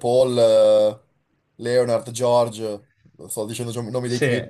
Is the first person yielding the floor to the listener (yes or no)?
yes